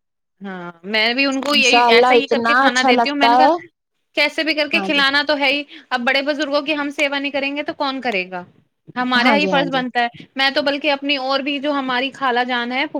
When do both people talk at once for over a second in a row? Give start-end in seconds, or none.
1.6-3.5